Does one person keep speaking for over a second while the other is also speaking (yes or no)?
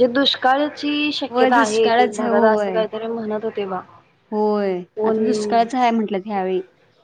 yes